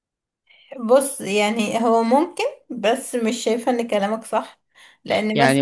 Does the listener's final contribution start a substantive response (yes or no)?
yes